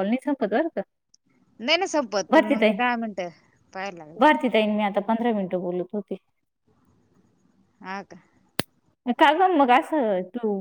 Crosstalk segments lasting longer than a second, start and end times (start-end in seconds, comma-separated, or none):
none